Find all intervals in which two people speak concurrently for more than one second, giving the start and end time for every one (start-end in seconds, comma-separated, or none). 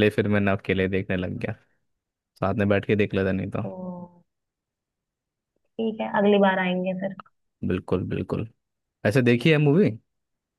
none